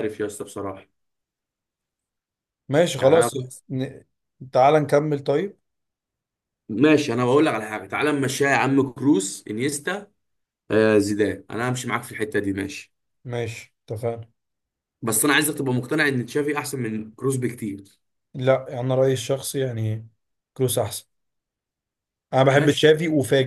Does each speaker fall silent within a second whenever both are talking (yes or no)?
yes